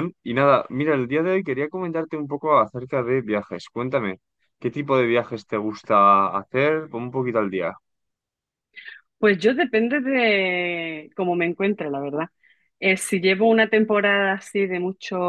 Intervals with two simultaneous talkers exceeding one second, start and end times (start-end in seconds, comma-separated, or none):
none